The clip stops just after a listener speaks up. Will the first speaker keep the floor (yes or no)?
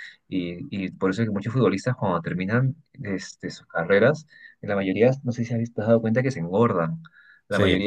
yes